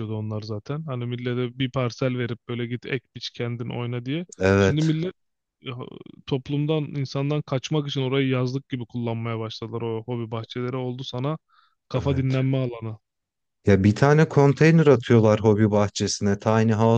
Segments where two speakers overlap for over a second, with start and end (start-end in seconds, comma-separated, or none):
none